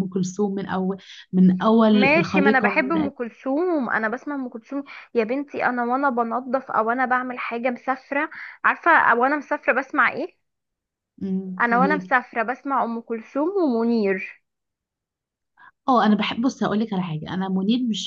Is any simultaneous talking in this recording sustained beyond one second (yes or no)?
yes